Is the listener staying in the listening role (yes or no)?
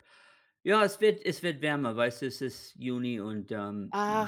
no